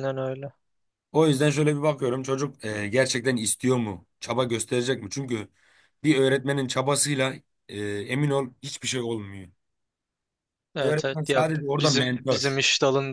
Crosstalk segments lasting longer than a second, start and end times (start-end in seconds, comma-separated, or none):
10.8-12.5